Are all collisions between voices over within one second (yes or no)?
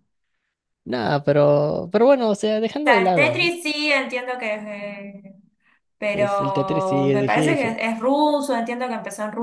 no